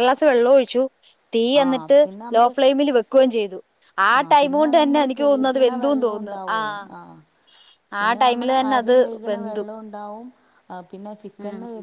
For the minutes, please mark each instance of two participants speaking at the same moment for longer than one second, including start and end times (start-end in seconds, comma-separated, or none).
4.4-6.6